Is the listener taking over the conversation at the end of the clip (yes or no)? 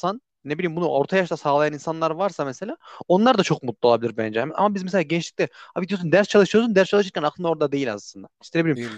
no